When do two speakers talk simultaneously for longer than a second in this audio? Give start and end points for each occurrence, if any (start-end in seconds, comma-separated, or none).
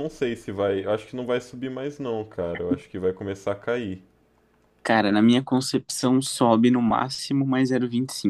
none